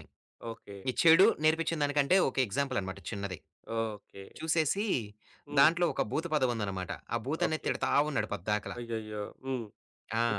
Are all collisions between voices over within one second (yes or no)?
yes